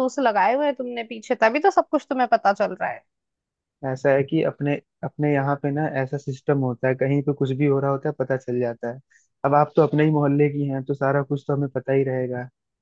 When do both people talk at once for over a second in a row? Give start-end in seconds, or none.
none